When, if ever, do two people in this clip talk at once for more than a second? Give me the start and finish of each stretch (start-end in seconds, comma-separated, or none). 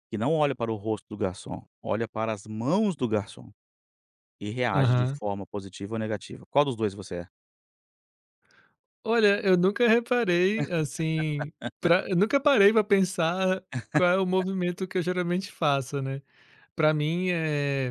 none